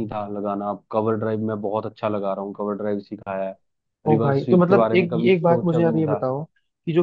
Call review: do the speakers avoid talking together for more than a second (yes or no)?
no